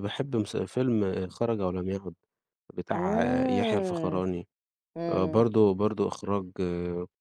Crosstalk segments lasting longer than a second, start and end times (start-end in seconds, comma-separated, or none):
2.9-4.2